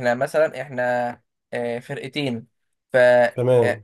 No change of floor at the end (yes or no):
yes